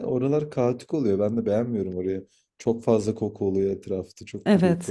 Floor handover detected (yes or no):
yes